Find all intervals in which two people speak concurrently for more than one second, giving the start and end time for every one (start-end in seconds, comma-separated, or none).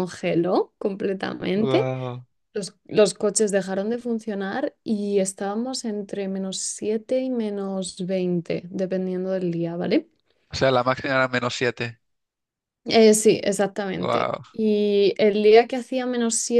none